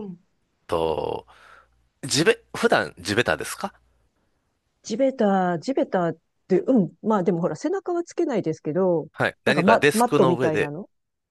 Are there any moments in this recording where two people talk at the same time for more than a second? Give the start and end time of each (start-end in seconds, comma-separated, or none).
9.4-10.7